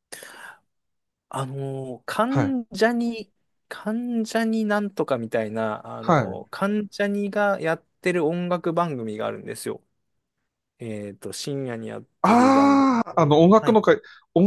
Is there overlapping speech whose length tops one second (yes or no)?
yes